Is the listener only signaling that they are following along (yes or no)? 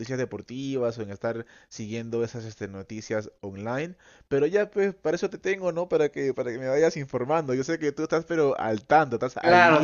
no